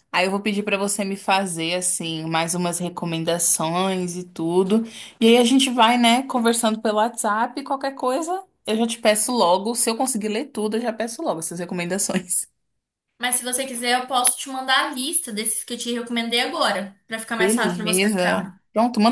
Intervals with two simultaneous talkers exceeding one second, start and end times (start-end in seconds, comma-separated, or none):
17.4-18.6